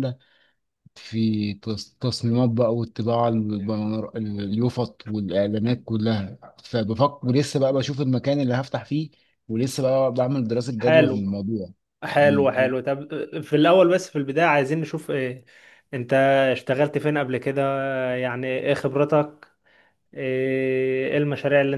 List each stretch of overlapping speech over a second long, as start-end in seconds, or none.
none